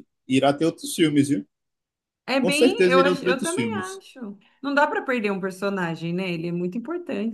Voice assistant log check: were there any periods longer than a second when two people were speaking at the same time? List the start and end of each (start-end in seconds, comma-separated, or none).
2.4-4.0